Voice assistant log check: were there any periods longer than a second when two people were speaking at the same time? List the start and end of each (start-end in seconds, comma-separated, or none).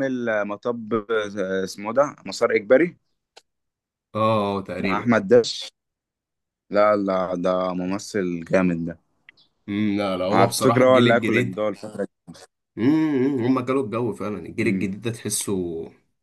10.3-11.6